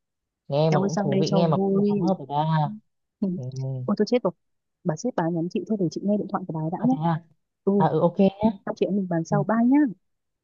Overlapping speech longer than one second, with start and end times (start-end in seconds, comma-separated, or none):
0.7-2.0